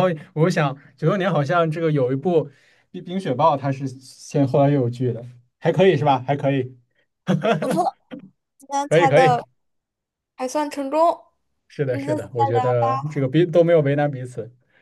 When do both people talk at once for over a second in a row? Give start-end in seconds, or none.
11.8-13.2